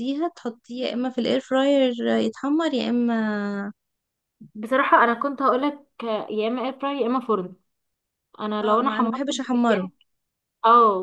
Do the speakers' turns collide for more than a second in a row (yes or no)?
yes